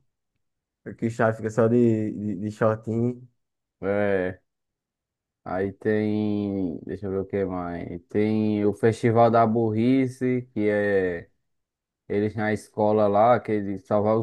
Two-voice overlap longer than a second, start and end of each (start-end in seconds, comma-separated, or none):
none